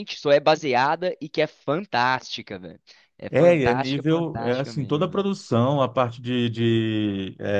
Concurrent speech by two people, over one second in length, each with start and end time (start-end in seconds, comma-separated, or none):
3.3-5.3